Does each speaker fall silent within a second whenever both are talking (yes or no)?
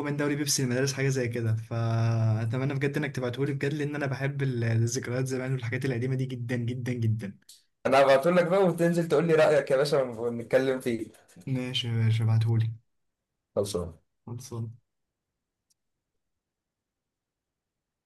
yes